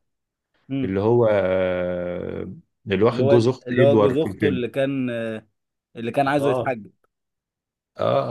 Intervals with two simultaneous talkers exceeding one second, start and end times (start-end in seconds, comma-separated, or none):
3.1-4.7